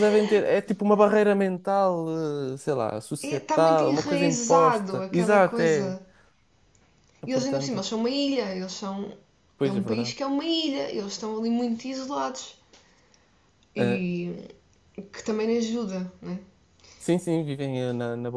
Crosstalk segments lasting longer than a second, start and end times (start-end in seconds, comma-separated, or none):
3.2-6.0